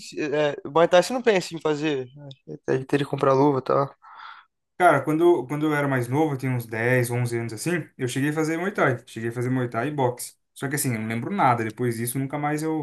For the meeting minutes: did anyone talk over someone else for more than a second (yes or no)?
no